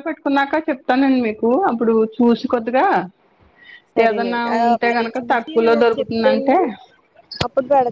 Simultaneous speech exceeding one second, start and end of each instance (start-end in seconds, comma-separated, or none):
4.1-6.6